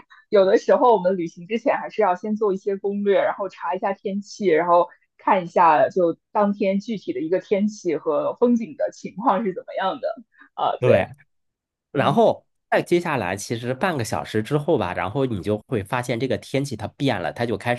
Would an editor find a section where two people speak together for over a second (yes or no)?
no